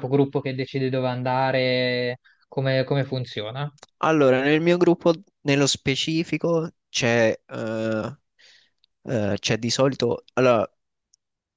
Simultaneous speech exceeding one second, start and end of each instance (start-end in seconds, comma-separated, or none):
none